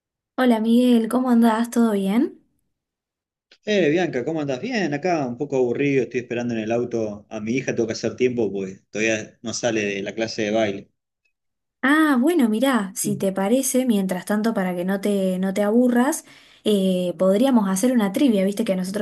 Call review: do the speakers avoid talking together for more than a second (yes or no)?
yes